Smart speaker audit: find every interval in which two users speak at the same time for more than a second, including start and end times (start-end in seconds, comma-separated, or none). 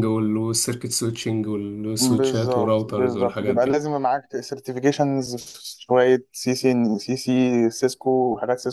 2.0-3.8